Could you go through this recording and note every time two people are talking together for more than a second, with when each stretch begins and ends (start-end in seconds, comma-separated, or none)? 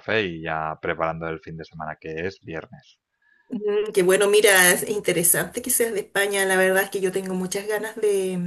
none